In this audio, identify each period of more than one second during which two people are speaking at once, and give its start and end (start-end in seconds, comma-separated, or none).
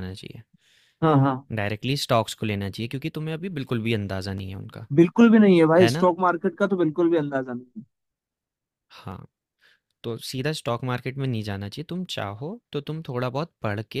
none